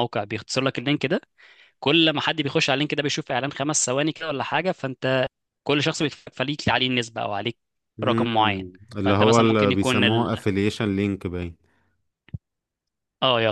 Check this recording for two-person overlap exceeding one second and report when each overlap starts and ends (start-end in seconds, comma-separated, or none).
8.0-10.3